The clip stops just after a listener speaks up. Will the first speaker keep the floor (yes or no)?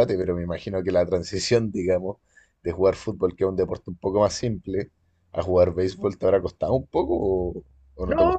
no